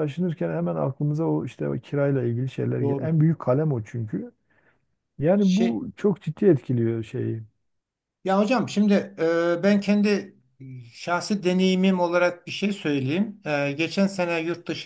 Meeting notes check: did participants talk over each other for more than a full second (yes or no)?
no